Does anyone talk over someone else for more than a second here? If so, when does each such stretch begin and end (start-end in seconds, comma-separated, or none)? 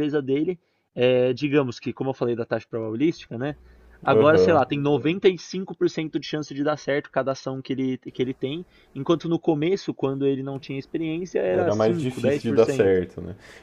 11.5-13.0